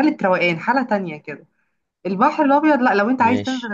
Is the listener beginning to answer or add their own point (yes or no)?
no